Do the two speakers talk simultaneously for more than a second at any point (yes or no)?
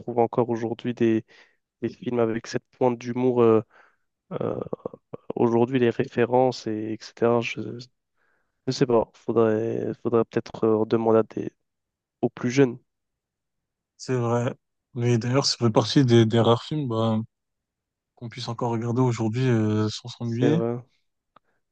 no